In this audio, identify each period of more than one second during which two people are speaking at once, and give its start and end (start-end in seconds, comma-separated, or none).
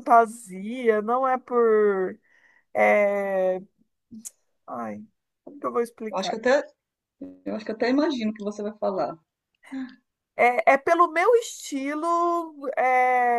none